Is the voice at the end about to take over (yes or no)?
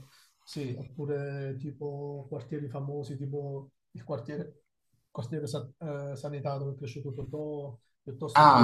yes